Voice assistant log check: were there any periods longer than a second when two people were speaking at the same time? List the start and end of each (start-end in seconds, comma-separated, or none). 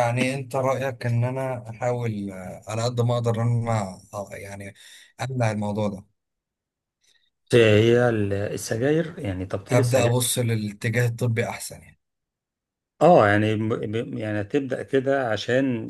none